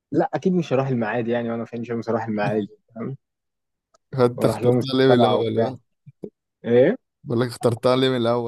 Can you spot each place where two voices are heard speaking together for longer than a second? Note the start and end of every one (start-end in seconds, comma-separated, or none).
4.4-5.7